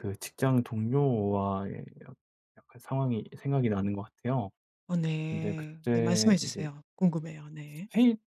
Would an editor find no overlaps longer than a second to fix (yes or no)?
no